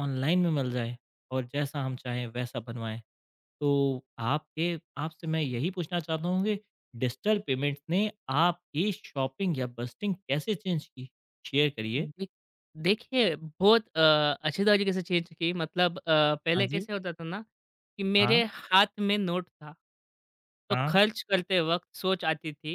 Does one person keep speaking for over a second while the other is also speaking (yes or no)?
no